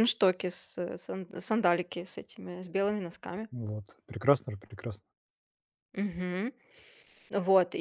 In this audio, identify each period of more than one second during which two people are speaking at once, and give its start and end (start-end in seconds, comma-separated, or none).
none